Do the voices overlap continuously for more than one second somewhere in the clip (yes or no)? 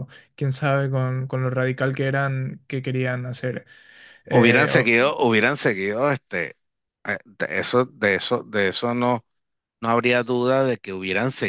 no